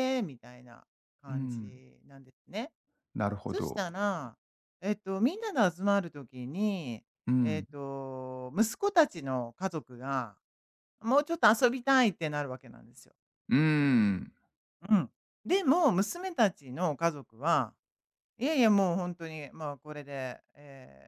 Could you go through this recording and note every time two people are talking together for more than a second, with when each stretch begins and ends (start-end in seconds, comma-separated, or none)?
none